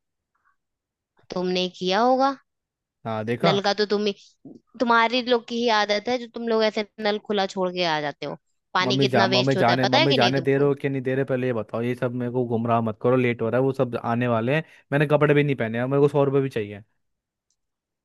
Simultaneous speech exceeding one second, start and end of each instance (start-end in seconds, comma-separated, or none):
8.8-10.7